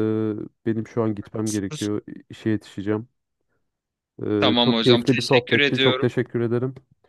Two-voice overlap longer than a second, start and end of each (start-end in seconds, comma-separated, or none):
4.4-6.1